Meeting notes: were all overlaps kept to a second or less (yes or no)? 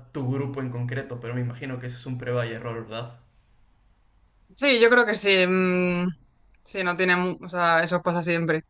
yes